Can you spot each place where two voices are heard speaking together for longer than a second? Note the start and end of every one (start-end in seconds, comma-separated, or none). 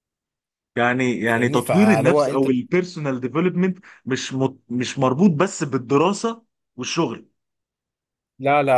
1.2-2.5